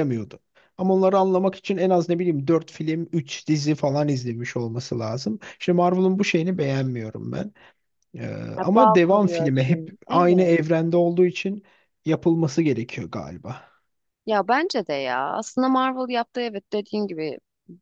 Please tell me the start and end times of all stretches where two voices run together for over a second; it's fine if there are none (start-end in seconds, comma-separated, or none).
8.6-10.6